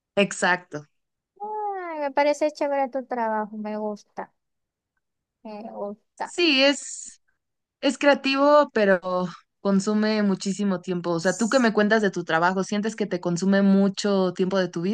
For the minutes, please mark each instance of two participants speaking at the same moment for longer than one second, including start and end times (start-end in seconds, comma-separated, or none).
none